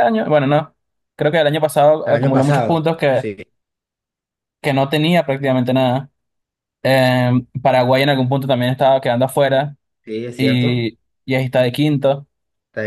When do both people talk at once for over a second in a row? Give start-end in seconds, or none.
2.0-3.3